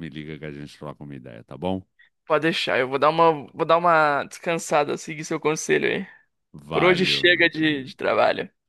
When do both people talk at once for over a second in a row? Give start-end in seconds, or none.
6.7-7.9